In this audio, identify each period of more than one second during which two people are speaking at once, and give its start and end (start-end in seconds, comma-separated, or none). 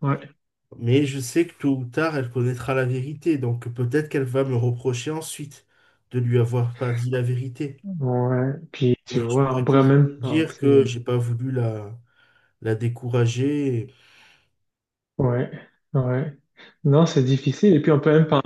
9.1-10.9